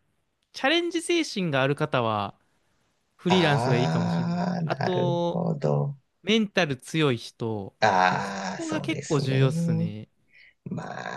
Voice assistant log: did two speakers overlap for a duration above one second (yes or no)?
yes